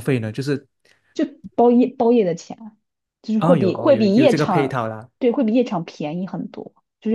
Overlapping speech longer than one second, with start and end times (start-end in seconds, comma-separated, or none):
3.4-4.8